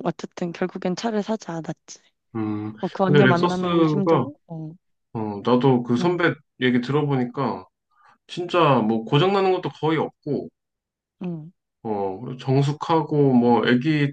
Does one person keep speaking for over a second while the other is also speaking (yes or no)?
yes